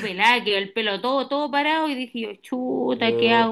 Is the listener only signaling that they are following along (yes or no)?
yes